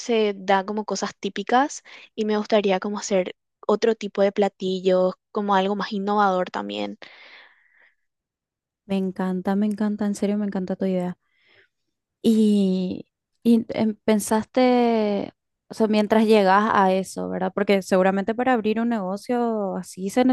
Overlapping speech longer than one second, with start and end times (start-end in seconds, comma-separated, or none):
none